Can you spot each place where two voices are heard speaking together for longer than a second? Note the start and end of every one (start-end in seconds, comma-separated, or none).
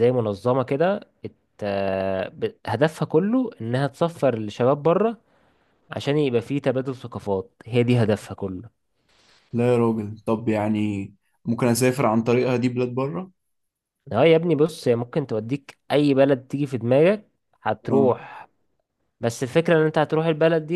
none